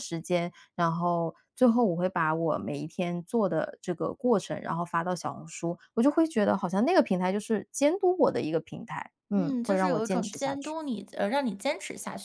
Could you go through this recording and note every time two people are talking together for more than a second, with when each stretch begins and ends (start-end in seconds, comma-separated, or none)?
9.3-10.8